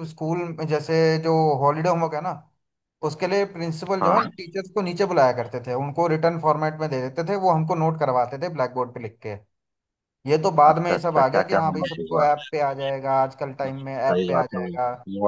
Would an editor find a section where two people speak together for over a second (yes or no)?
yes